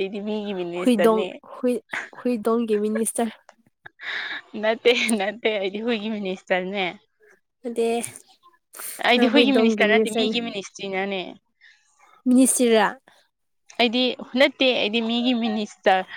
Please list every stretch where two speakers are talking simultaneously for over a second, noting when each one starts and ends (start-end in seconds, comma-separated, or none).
9.1-10.4